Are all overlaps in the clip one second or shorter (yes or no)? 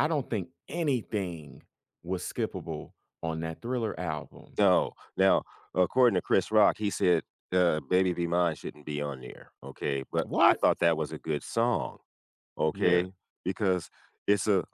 yes